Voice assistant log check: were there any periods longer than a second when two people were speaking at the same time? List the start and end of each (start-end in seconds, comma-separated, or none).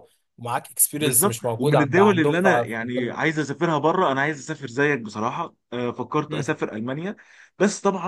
1.0-3.1